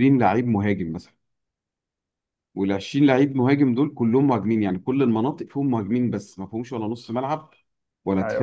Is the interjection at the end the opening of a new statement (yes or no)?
no